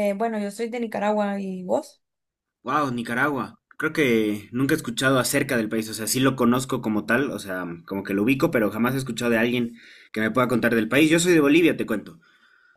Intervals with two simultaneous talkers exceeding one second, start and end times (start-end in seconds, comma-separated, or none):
none